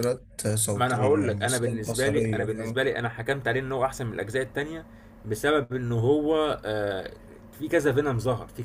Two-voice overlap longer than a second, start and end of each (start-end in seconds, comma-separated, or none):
0.7-2.8